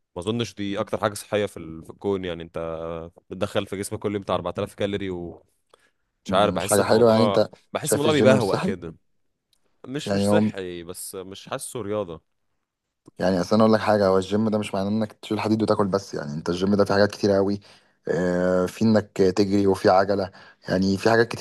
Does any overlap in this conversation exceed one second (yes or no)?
yes